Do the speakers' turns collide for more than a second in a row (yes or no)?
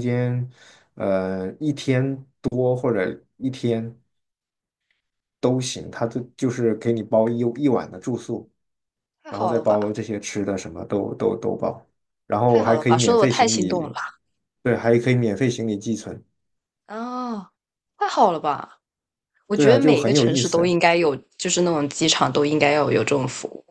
yes